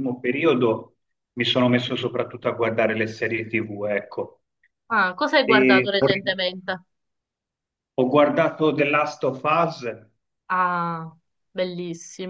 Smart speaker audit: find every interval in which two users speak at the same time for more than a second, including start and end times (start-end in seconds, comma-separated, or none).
none